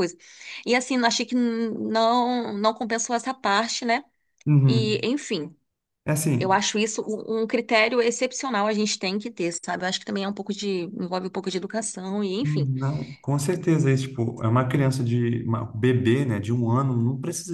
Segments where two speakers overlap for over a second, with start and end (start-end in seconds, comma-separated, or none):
none